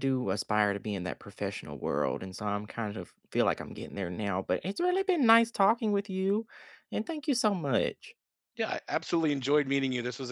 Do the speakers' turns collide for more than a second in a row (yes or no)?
no